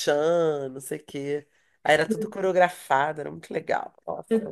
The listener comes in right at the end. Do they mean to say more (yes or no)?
yes